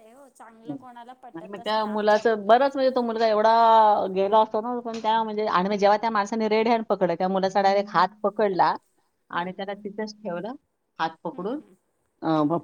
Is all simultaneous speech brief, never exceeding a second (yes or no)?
no